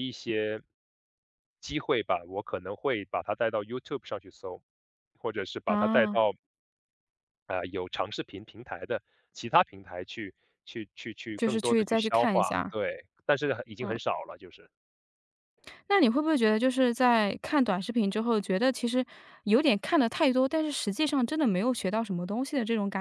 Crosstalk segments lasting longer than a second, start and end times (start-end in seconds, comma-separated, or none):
11.4-12.8